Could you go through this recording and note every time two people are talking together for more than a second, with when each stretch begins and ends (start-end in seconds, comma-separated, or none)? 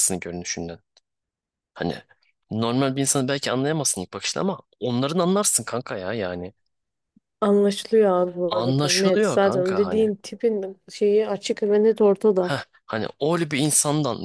8.5-10.1